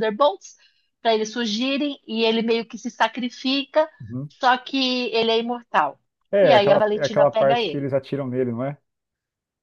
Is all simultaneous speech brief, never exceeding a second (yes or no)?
no